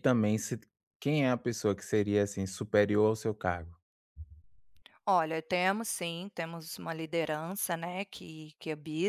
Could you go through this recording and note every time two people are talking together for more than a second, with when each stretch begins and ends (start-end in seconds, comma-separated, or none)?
none